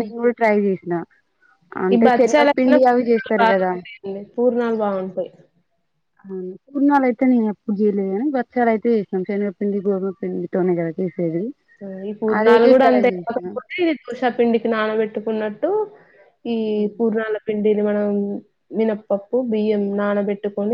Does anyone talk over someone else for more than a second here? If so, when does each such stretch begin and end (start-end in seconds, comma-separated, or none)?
1.9-3.7